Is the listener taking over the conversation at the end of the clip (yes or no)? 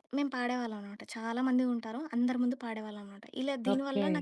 no